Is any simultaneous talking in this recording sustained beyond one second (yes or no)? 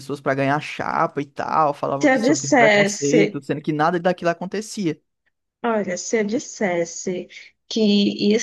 yes